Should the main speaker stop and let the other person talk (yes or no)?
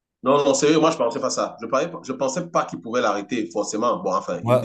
yes